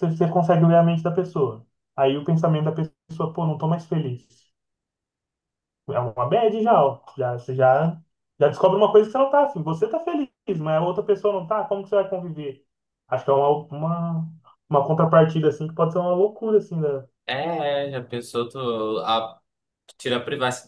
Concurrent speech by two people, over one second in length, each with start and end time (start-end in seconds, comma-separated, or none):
none